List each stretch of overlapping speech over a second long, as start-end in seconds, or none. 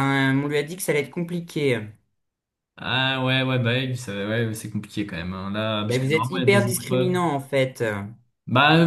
5.8-7.2